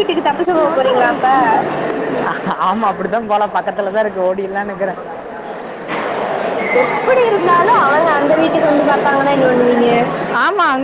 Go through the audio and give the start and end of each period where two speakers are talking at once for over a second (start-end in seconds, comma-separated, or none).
none